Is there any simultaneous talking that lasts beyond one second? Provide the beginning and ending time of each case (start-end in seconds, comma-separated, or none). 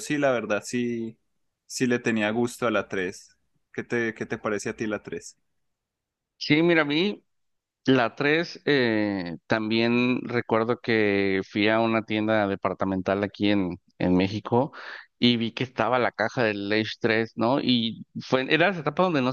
none